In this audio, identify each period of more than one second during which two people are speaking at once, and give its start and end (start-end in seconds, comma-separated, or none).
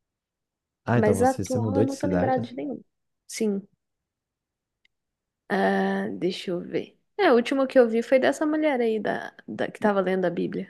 0.9-2.4